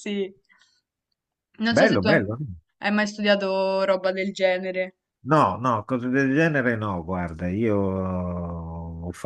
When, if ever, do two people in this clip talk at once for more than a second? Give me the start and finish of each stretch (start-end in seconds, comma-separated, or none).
none